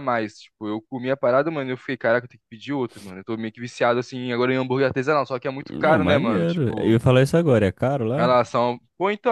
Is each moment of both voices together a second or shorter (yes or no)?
no